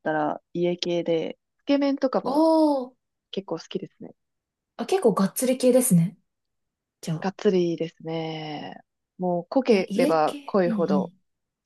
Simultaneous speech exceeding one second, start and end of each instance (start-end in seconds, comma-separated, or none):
9.7-11.1